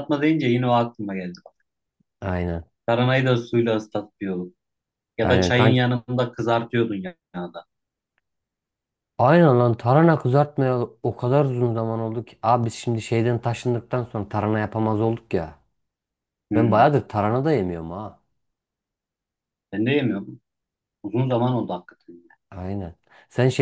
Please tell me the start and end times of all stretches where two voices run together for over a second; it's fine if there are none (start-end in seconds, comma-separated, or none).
none